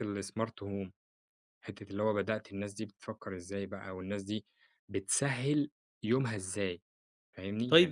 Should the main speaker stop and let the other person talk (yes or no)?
yes